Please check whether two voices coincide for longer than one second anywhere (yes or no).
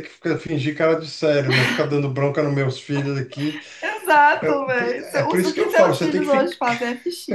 yes